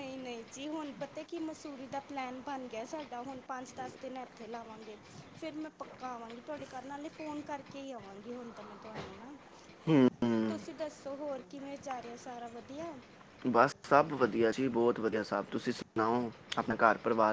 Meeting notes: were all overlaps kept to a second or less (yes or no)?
yes